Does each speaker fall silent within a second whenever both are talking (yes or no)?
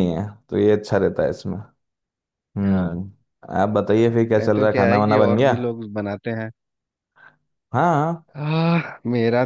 no